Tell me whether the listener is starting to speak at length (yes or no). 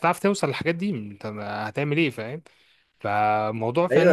yes